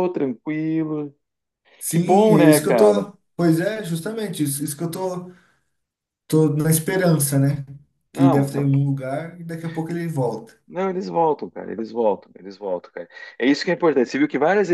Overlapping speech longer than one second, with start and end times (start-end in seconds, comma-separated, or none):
1.9-3.1